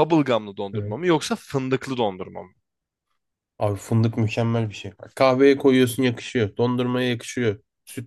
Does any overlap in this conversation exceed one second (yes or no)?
no